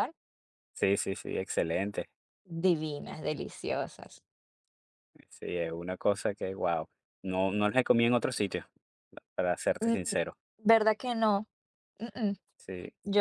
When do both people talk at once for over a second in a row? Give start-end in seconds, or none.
none